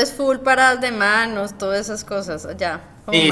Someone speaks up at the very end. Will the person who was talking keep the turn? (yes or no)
no